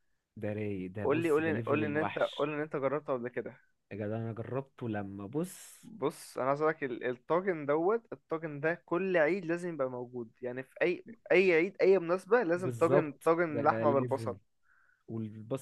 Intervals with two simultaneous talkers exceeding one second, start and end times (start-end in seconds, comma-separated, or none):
1.0-2.5, 12.5-14.4